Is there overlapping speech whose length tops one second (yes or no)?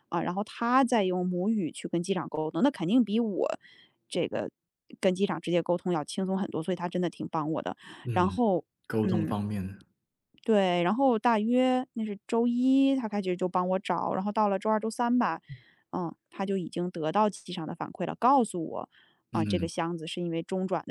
no